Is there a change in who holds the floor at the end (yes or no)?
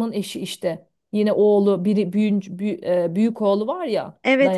yes